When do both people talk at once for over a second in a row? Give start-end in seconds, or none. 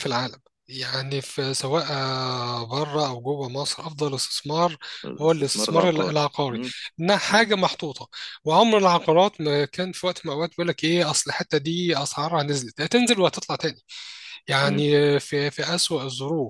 5.2-6.6